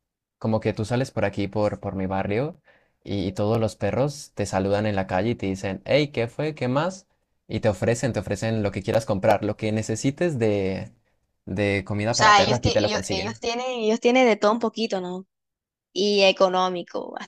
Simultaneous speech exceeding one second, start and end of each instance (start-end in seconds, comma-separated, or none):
12.1-13.4